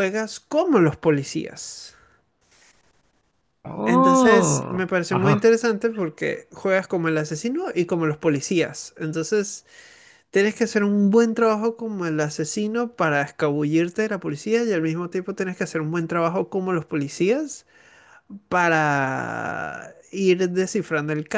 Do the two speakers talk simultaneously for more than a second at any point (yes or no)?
yes